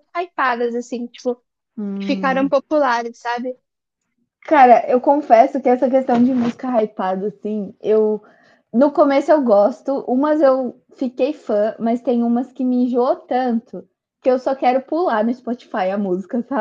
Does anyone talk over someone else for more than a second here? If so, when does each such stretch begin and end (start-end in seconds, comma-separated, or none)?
none